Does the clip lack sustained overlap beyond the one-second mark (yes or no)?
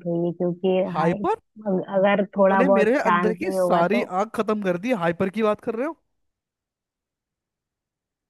no